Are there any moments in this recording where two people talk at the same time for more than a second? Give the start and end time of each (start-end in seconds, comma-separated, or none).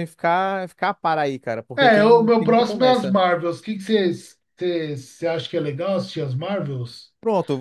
1.8-3.2